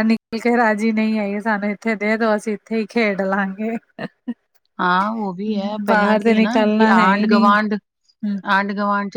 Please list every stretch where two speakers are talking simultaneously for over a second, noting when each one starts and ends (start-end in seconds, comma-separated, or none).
5.9-7.5